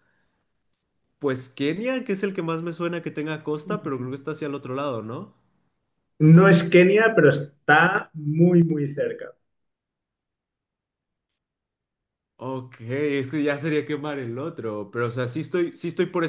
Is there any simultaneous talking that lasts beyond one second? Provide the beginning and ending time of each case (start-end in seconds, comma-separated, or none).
none